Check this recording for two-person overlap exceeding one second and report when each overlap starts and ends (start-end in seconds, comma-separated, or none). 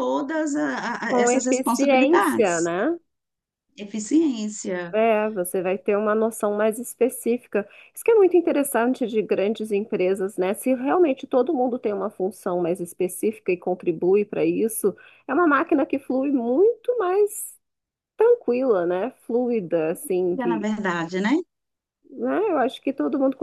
1.1-2.7